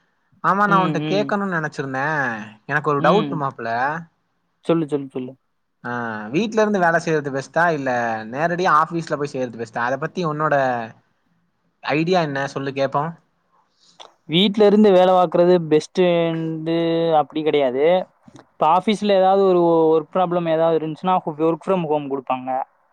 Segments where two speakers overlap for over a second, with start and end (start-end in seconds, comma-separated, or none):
none